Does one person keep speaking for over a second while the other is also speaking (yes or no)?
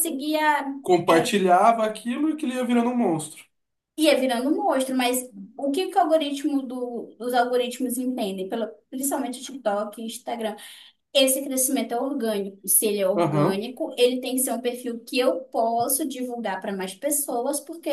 no